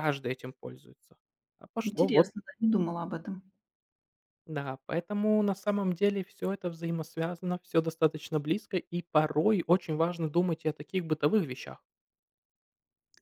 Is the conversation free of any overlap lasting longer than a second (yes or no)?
yes